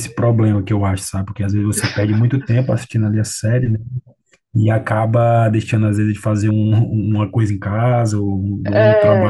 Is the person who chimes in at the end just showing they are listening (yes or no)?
yes